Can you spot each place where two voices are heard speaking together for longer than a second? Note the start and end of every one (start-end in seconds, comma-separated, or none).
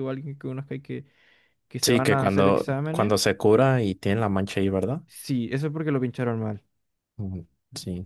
1.8-3.1